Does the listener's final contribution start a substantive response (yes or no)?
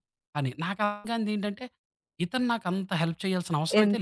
yes